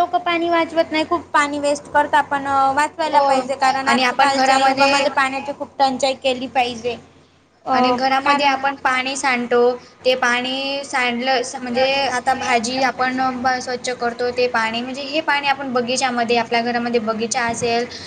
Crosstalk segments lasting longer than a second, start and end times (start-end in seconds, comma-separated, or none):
3.9-5.1